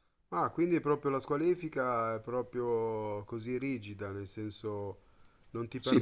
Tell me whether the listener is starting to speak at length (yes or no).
yes